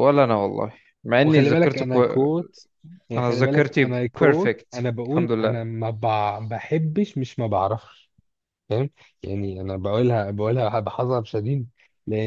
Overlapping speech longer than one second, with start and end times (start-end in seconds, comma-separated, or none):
3.2-5.6